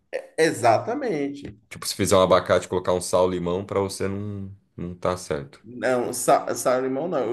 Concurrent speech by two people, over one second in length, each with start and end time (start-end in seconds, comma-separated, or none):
none